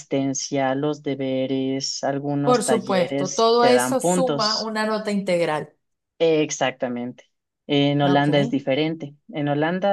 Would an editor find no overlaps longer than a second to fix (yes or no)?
no